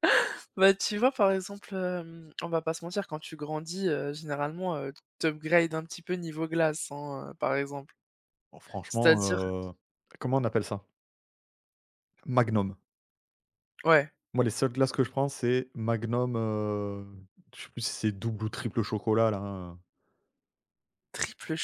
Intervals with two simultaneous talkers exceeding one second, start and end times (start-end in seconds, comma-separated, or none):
none